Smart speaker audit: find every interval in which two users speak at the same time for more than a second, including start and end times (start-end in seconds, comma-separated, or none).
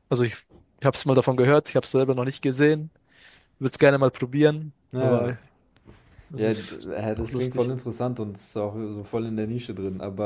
6.4-7.7